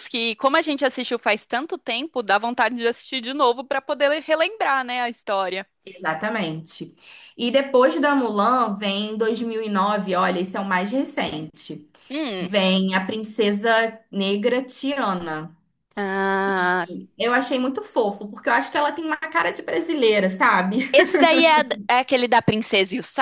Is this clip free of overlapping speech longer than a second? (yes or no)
yes